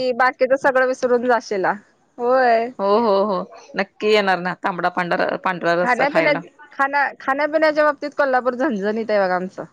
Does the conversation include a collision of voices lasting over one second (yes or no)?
no